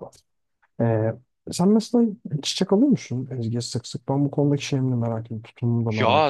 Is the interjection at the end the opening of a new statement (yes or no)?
yes